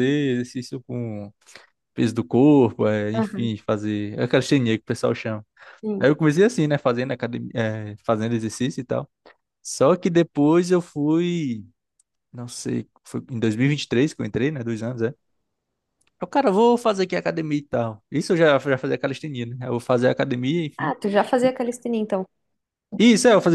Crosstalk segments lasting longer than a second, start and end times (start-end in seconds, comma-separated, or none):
none